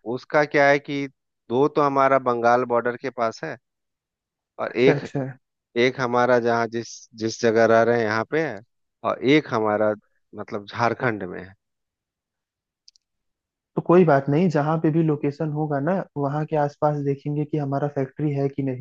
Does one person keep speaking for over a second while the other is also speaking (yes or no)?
no